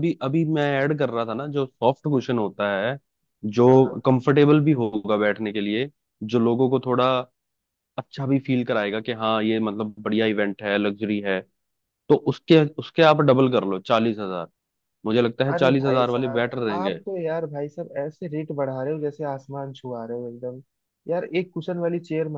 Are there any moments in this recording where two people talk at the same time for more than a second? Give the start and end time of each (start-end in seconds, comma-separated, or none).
15.5-17.0